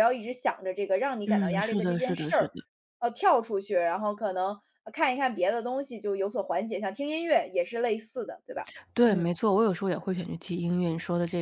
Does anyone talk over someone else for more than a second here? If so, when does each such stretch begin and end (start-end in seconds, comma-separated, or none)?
1.3-2.5